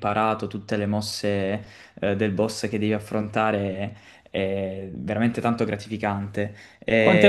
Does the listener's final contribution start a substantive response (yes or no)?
yes